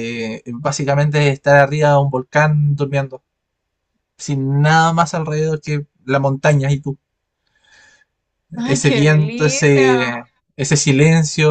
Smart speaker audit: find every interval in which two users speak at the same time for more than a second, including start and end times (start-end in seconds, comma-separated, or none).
8.6-10.1